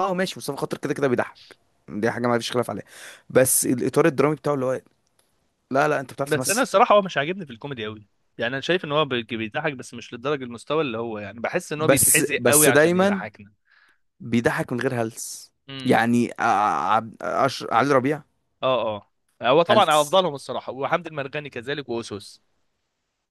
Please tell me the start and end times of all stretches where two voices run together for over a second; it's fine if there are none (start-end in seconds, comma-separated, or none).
11.7-13.3